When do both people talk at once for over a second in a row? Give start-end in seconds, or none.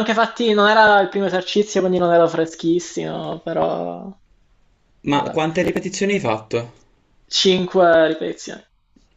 none